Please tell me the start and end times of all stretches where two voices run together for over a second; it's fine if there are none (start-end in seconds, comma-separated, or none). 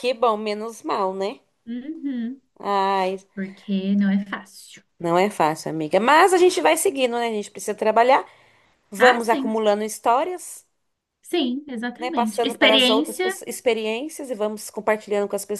12.0-13.3